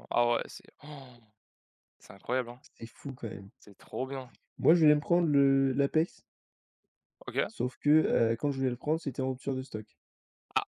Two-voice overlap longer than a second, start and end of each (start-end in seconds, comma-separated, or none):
none